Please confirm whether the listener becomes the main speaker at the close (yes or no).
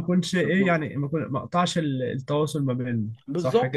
yes